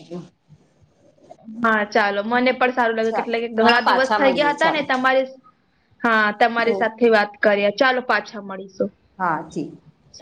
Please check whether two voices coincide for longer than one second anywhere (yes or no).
yes